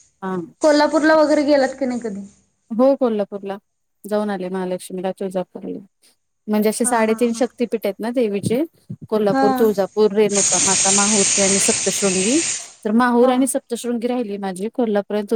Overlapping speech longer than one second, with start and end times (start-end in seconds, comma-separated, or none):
none